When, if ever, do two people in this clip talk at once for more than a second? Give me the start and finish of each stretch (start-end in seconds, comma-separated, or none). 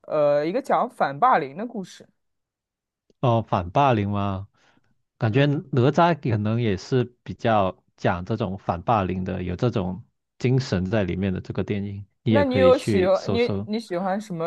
12.3-13.7